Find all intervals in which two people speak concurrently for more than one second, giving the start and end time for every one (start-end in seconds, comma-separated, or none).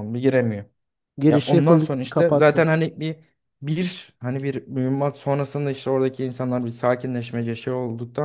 1.3-2.7